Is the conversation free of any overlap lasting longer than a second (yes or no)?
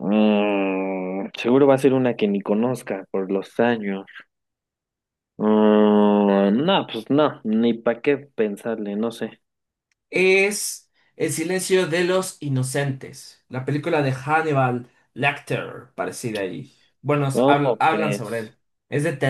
no